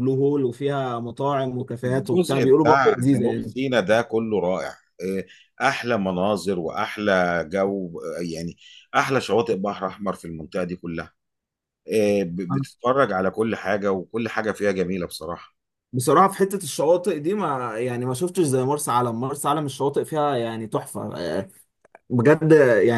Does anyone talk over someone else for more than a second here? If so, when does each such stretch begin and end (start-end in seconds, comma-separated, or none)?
1.9-3.5